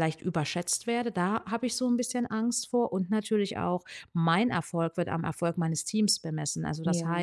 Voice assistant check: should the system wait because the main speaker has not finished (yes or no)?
yes